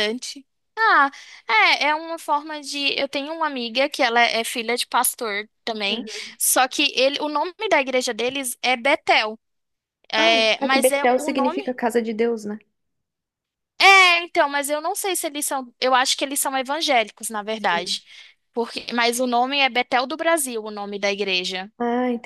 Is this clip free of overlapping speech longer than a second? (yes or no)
no